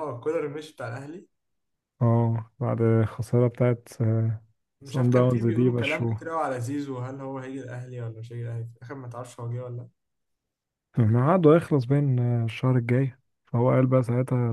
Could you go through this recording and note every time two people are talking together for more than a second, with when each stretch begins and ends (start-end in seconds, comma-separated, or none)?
4.8-6.3